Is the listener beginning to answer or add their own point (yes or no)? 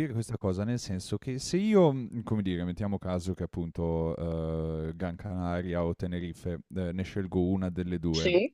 no